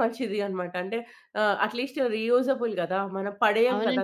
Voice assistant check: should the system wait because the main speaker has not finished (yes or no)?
no